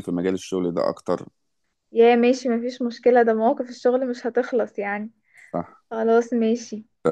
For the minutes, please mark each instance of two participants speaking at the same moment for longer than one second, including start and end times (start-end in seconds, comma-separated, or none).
none